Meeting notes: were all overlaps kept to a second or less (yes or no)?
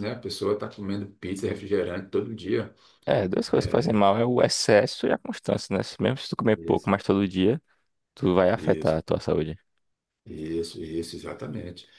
yes